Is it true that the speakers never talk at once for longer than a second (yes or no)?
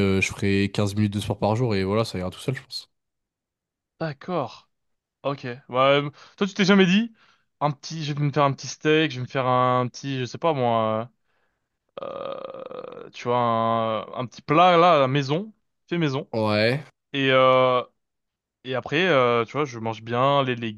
yes